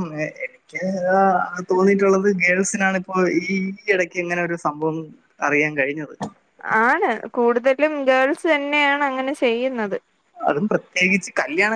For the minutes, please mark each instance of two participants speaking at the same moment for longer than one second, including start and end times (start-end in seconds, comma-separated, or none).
none